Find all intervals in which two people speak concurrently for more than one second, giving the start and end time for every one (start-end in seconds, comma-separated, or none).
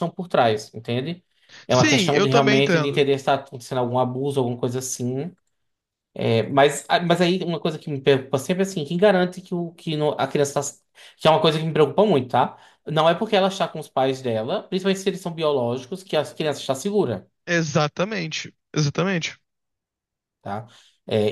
1.7-3.0